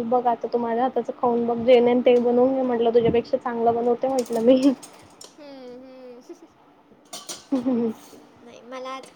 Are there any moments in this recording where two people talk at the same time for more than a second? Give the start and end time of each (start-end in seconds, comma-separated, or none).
none